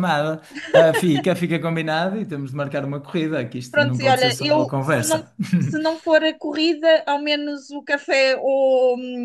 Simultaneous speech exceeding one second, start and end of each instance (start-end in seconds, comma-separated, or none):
3.7-5.2